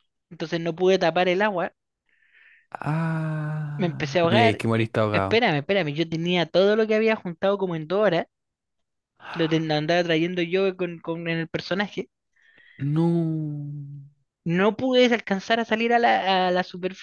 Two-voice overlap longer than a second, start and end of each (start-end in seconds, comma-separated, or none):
3.8-5.5